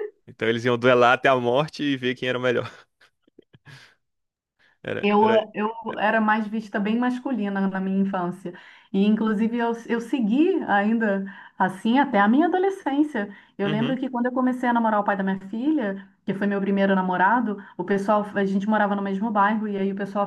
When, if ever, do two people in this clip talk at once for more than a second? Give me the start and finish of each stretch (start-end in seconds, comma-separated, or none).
none